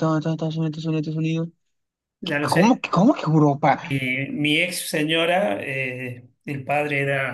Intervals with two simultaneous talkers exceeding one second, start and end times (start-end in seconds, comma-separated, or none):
none